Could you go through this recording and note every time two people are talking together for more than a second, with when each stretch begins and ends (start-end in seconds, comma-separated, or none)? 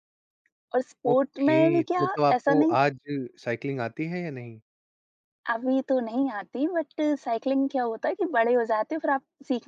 1.1-2.8